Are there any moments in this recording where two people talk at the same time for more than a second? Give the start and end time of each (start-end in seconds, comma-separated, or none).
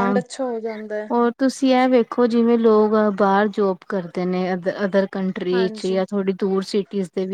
none